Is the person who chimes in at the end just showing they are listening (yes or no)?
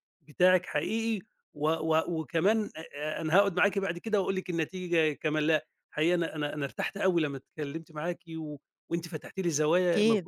yes